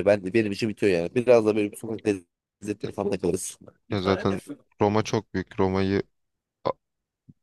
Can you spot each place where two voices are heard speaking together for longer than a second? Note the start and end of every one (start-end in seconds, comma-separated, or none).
none